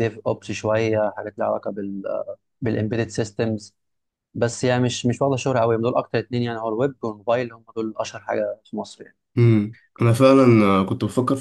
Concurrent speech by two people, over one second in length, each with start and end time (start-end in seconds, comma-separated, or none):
none